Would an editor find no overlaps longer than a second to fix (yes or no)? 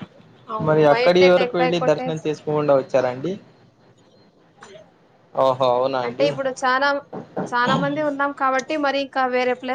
no